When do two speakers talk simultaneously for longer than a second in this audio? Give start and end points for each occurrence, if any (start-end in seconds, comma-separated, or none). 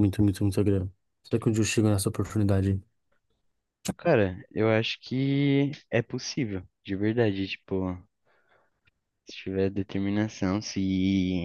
none